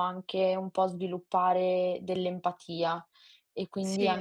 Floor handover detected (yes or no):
no